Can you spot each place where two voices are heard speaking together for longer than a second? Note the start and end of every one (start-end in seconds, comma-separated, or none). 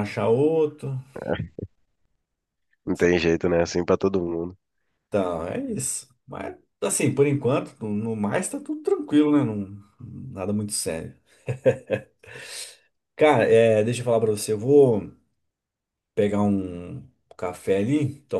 none